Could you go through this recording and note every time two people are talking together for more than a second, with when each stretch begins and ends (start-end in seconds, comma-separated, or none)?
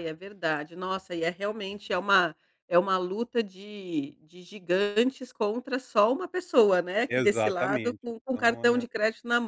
7.1-8.8